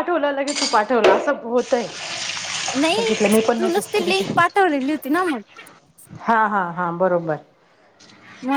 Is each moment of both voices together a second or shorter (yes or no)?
yes